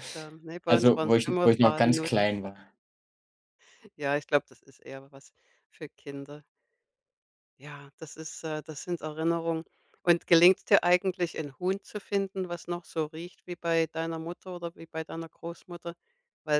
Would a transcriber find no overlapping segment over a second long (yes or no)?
no